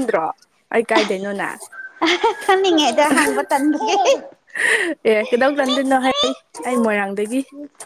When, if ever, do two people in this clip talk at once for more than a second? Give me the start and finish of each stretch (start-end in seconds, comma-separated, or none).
none